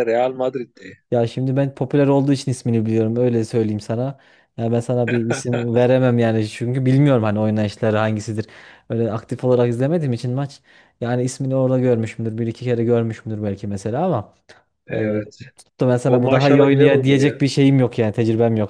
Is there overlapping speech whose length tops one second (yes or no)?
yes